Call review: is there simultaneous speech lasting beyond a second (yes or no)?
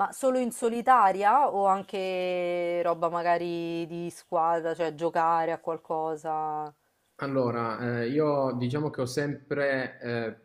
no